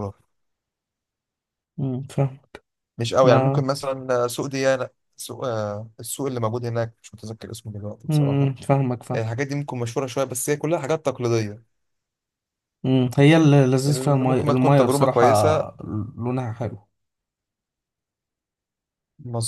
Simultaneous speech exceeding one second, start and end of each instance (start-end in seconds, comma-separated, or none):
13.9-15.3